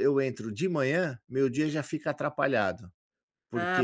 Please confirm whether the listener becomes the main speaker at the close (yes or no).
yes